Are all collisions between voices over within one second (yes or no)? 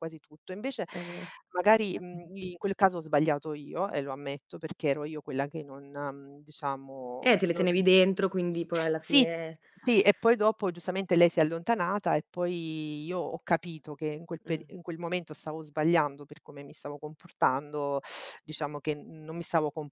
yes